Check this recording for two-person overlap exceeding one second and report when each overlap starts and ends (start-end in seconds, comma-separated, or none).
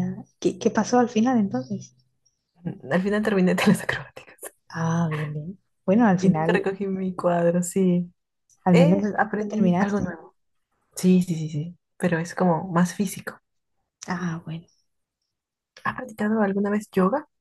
8.7-10.2